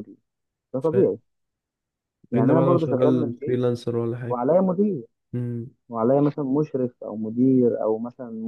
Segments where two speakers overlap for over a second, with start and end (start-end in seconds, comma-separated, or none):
2.3-3.6